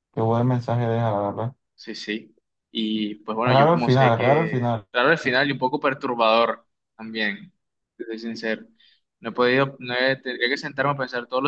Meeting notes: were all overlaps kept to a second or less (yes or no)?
no